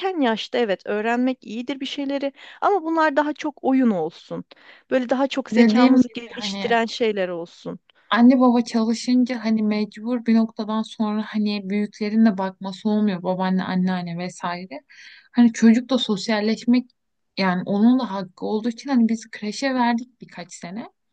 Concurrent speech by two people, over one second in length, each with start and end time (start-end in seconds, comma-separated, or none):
5.5-6.8